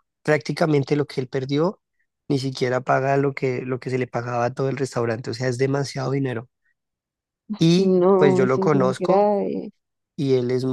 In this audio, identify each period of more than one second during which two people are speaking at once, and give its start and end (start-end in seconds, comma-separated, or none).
7.8-9.3